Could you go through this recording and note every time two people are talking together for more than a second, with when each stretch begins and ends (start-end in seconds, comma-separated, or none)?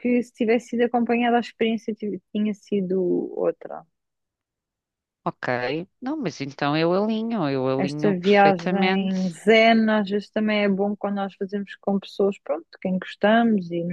7.8-9.3